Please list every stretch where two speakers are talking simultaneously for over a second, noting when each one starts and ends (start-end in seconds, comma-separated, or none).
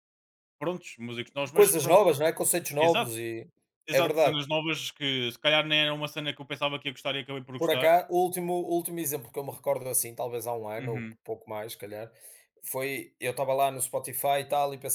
none